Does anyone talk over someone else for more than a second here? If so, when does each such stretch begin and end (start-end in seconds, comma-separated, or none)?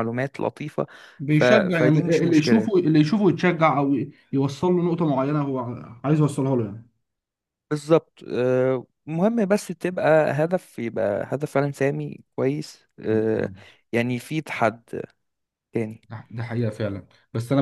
1.3-2.8